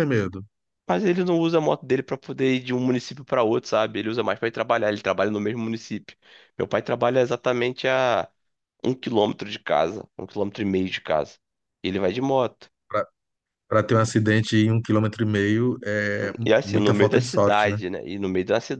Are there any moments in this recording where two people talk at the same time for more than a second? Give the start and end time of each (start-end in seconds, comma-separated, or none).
16.4-17.8